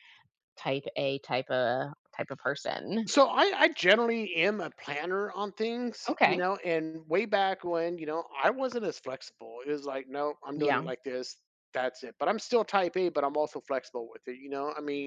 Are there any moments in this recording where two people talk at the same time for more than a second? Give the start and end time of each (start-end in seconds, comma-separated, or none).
none